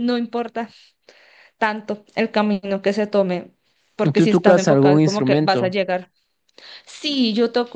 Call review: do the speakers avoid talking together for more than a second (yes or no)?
no